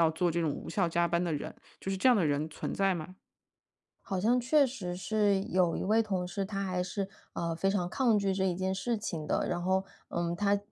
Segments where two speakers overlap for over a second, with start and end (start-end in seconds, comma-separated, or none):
none